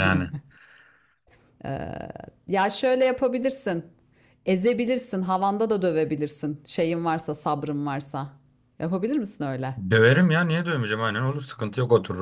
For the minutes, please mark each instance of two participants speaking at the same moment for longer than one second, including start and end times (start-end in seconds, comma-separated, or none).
none